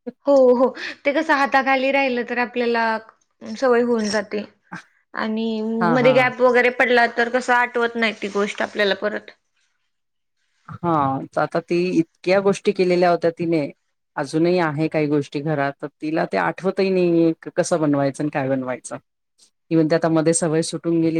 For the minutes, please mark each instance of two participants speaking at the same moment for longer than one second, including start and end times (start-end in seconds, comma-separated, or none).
none